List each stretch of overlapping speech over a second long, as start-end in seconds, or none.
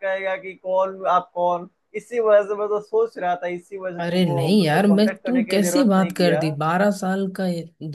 4.0-6.4